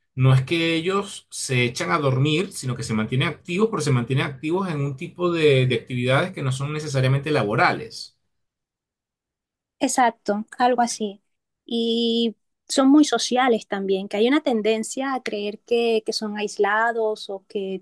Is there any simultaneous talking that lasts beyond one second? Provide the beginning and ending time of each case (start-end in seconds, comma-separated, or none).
none